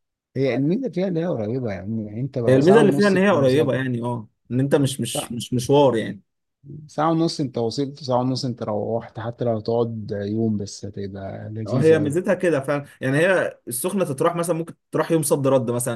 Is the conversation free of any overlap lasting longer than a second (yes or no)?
no